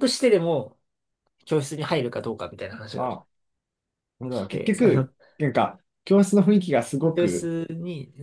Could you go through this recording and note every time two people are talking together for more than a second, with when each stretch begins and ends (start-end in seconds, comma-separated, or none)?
none